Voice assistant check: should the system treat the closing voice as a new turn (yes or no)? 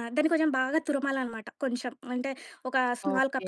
no